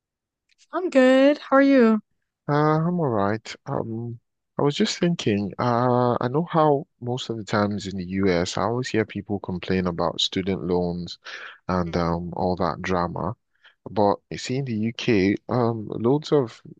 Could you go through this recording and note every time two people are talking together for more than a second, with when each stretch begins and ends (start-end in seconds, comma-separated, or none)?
none